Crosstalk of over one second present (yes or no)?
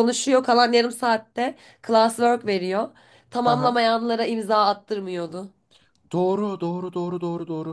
no